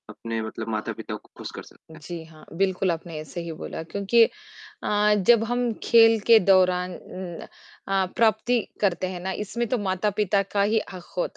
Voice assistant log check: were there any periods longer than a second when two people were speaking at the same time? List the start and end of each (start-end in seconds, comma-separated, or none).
none